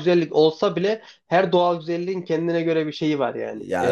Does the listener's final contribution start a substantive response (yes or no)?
yes